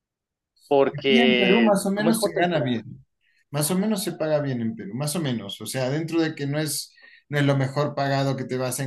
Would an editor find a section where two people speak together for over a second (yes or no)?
yes